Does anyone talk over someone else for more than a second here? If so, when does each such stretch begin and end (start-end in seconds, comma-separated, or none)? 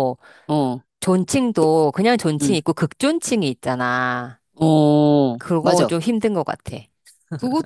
none